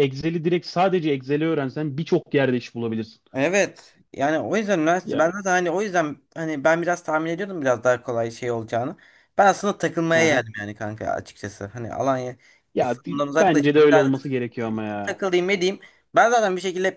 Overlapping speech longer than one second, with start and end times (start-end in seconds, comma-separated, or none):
12.7-14.1